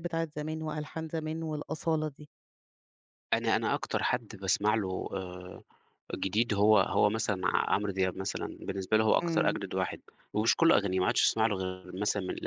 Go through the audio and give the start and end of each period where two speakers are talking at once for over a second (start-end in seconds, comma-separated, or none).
none